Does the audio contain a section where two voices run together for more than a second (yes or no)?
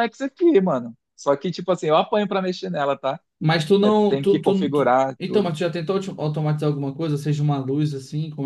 yes